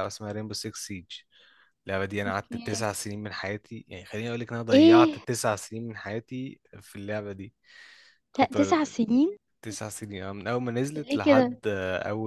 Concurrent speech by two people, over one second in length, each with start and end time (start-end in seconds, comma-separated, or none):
none